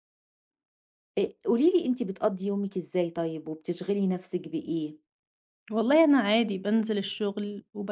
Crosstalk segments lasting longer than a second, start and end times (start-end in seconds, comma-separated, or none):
none